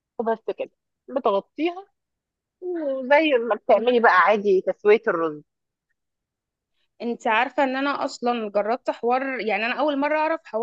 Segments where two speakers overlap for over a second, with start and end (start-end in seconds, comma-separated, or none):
none